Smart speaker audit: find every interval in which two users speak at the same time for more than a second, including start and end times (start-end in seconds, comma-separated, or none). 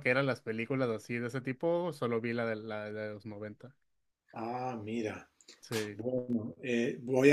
none